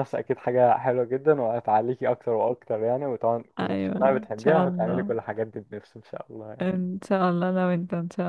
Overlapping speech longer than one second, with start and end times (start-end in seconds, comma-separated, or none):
3.6-5.1